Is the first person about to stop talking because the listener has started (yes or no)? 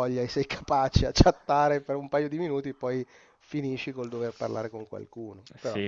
yes